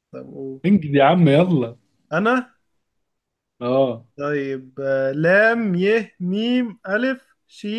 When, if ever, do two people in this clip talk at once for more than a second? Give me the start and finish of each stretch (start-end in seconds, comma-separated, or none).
none